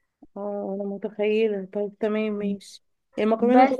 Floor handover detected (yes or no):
no